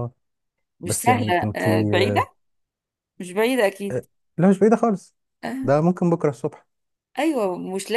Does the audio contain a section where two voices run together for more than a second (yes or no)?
yes